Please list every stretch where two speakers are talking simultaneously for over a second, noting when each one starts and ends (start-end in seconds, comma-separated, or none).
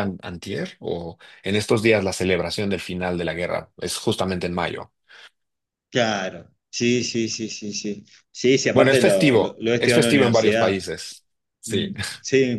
8.7-10.8